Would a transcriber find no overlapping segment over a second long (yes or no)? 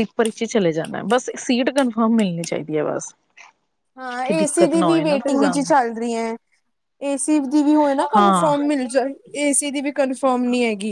no